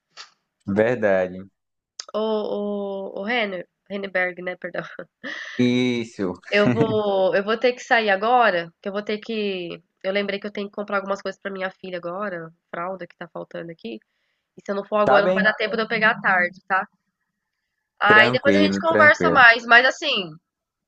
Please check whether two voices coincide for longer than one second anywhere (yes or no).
yes